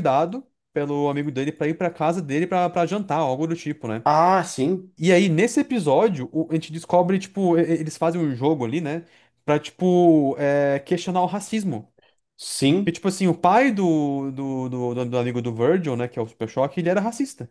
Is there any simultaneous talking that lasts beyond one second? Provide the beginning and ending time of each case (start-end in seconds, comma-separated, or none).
none